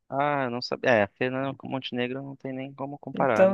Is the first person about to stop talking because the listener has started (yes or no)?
yes